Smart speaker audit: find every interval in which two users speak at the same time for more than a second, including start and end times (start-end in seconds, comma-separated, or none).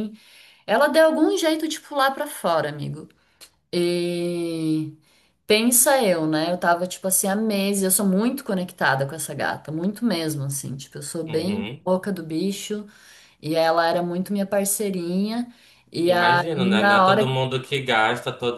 16.1-17.3